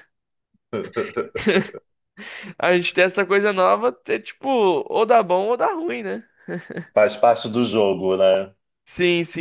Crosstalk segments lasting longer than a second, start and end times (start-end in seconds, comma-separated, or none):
none